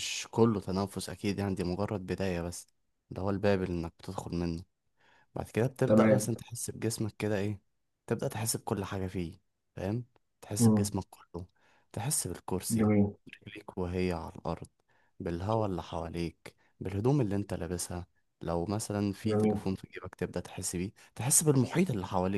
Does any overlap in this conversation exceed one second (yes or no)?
no